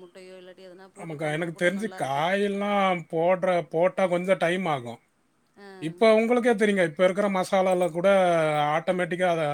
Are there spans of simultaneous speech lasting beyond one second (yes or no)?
no